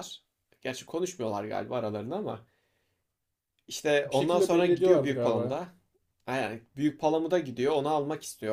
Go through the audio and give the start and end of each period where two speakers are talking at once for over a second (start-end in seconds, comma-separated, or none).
4.0-5.6